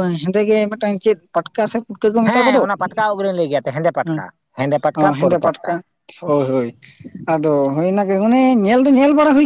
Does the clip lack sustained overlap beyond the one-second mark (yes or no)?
yes